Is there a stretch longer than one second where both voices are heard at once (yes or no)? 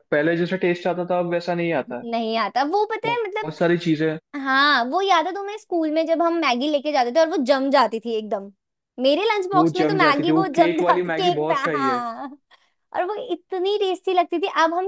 yes